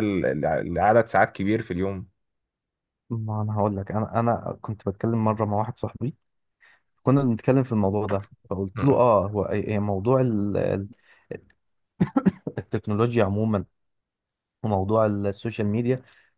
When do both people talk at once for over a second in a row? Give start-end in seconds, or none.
none